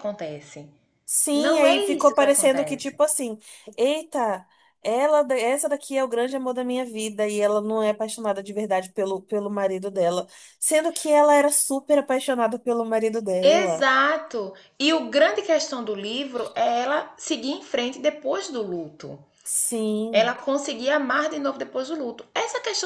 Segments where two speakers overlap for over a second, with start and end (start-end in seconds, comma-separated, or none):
1.3-3.0